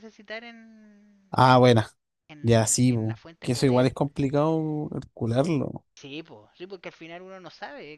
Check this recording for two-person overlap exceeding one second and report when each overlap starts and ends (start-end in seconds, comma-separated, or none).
2.4-3.9